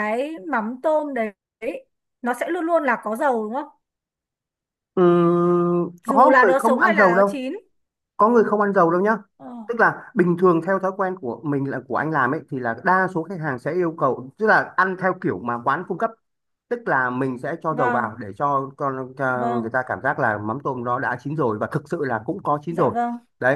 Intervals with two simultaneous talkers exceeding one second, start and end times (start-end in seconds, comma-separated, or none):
6.1-7.4